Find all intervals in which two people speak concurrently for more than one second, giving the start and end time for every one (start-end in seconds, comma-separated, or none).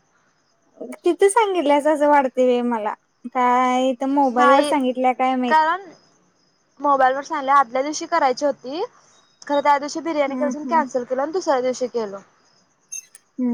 none